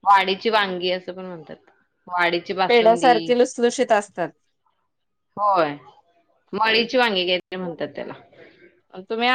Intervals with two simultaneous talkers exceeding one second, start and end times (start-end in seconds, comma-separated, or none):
none